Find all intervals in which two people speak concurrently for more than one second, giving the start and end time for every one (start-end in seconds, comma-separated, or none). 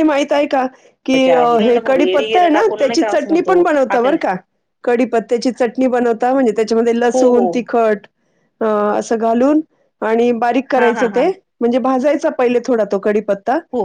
2.2-4.2